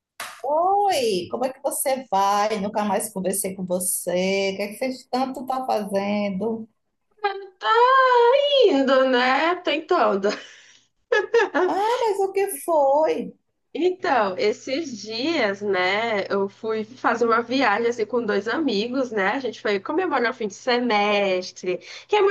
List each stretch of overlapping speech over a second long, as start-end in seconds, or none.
none